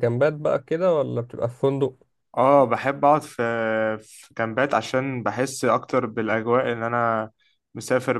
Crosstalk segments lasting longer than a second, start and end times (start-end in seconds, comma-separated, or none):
none